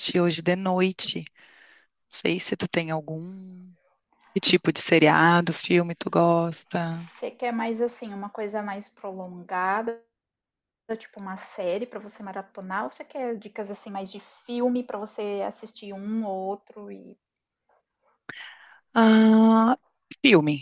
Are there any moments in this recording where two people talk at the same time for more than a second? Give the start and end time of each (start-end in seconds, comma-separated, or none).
none